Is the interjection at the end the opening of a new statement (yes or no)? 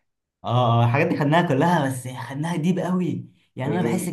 no